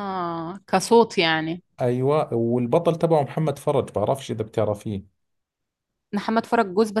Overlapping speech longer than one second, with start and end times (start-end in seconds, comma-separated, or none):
none